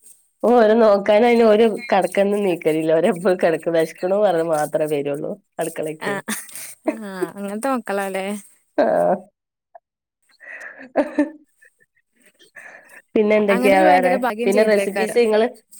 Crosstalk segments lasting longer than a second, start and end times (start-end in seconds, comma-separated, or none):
13.5-15.2